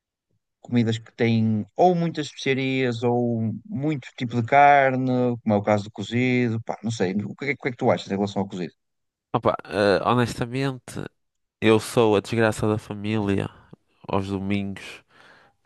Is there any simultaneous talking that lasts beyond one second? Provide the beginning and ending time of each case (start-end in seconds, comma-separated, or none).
none